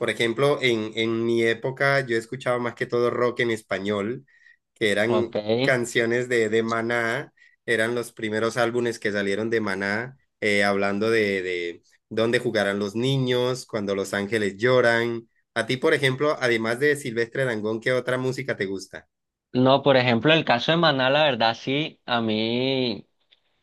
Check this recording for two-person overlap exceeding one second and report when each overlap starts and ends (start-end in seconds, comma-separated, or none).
none